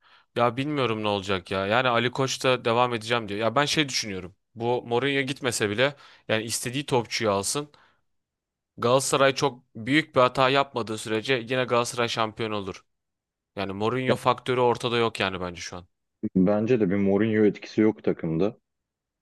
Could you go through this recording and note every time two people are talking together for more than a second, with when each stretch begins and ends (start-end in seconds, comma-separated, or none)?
none